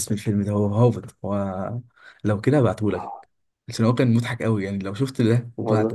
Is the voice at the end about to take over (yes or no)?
yes